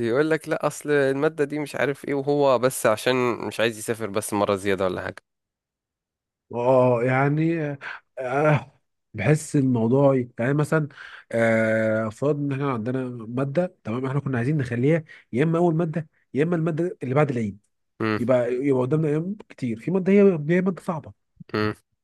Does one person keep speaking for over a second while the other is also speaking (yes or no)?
no